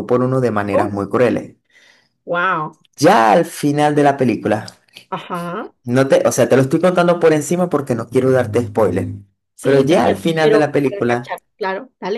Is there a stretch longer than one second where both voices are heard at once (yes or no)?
yes